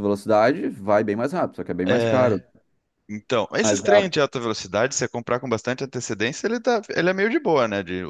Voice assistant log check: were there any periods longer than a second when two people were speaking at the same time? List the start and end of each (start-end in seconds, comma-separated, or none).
none